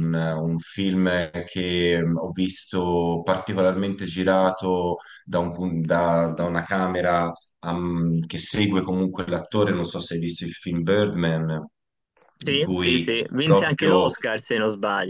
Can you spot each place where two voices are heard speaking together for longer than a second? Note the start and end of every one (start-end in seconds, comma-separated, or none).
12.4-14.1